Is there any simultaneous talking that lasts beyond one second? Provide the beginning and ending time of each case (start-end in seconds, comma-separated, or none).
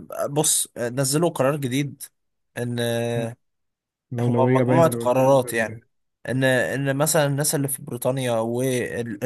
4.2-5.8